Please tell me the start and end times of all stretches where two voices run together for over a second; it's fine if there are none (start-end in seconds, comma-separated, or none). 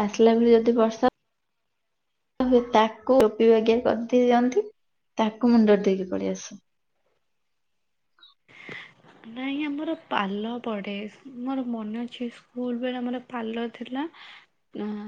none